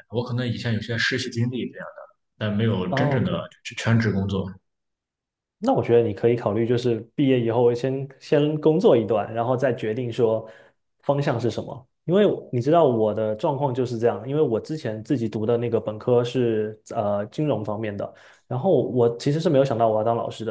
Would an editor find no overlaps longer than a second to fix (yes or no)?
yes